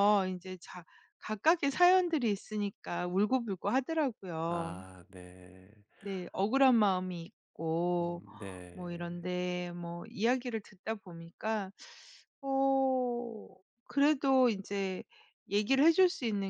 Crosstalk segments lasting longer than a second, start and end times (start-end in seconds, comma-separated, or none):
none